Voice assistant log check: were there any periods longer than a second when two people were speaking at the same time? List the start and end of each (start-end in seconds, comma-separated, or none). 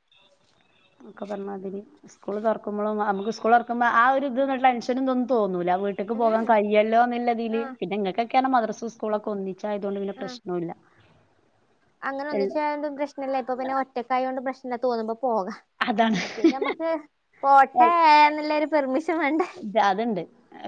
none